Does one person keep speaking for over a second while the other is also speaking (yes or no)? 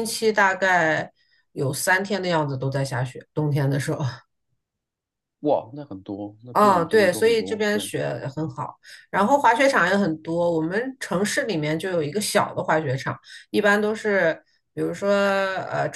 yes